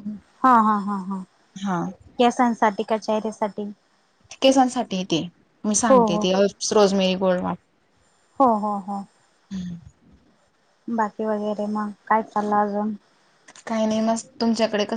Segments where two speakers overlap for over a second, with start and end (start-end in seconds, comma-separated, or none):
none